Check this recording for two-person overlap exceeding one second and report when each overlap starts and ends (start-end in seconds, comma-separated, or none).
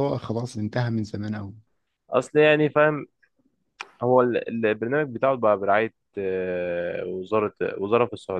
none